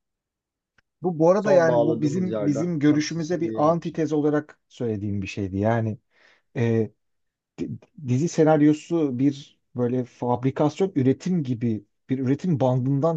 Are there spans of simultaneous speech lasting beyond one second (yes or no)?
yes